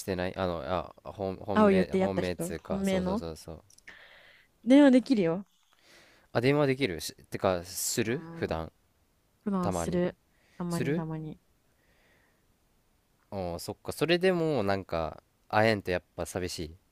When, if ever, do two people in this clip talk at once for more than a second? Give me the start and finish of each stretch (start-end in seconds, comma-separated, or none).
1.5-3.2